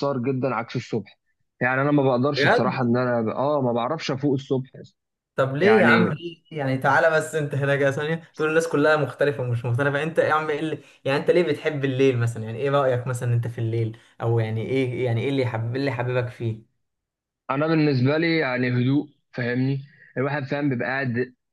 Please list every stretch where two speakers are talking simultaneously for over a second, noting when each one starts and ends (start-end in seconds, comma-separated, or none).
none